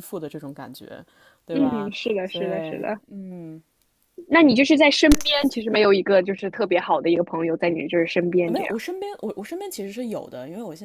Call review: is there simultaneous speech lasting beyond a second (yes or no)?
yes